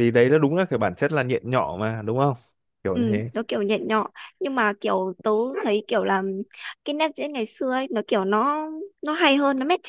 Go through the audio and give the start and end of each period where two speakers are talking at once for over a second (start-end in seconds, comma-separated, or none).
none